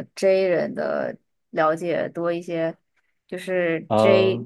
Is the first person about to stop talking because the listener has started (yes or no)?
no